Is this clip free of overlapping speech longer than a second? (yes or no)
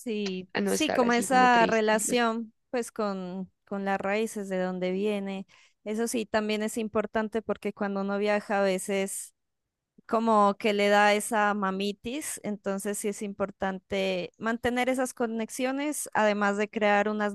no